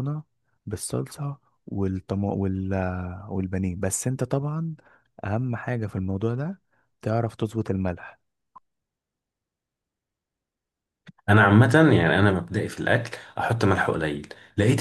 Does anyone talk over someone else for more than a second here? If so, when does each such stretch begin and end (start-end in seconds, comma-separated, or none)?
none